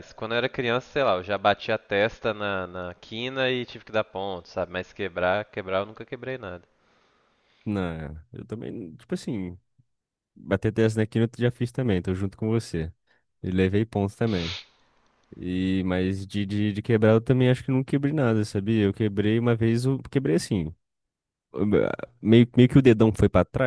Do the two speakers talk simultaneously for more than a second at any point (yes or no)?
no